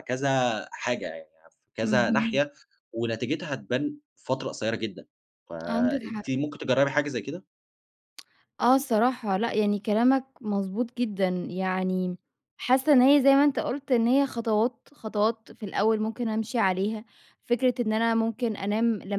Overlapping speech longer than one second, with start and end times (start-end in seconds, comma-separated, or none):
none